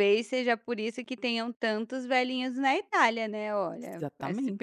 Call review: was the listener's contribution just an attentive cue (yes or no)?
no